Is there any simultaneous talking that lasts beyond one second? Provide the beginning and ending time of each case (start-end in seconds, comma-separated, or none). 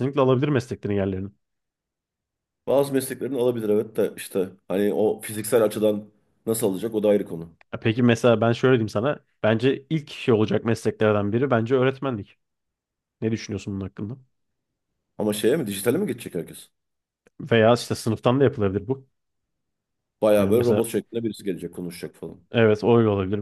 none